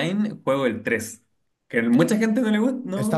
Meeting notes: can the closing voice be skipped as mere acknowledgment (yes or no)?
no